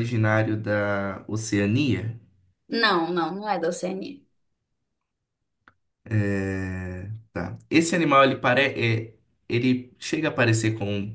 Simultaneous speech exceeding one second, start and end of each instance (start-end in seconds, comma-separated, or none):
none